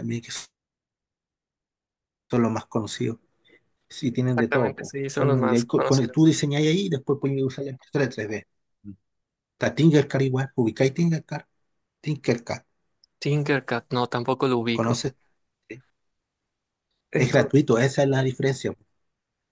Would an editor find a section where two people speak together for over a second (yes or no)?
yes